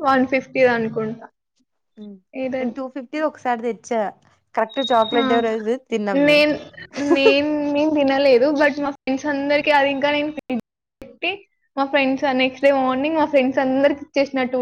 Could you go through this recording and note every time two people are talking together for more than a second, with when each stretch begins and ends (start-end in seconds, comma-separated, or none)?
none